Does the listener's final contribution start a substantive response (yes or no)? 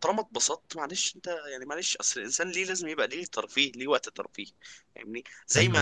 no